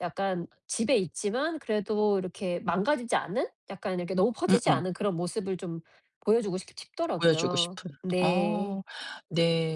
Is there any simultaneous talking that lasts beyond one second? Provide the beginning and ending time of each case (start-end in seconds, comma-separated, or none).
7.2-8.8